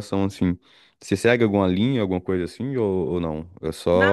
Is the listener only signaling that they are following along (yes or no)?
no